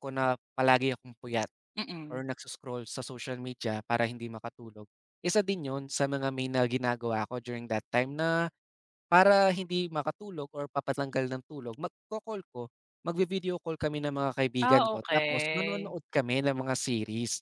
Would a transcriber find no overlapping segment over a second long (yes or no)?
no